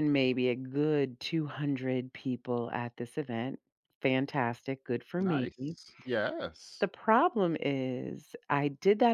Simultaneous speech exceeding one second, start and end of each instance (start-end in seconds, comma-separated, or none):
none